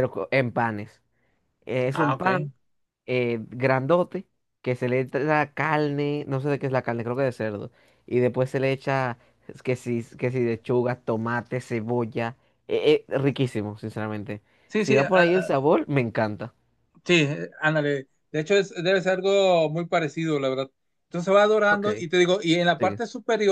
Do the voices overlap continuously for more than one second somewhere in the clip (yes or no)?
no